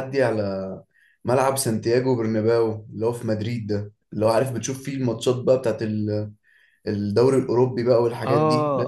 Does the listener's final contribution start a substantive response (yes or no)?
yes